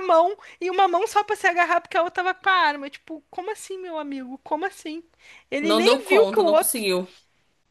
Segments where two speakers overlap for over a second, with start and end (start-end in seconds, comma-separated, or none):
5.6-6.8